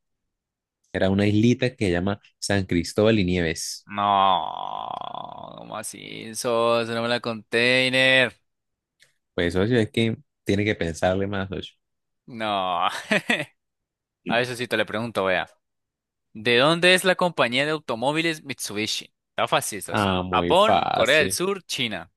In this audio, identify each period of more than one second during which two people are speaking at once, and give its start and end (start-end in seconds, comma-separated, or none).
19.9-21.4